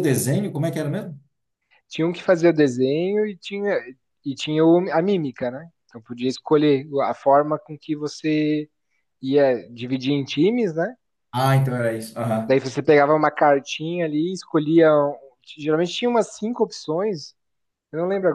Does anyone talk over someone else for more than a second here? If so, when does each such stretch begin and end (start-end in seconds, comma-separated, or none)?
none